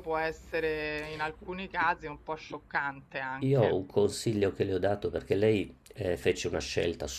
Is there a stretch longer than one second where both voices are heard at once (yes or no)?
no